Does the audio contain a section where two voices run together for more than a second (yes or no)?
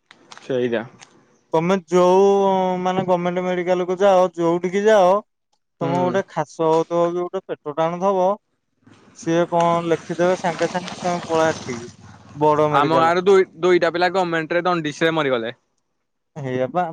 no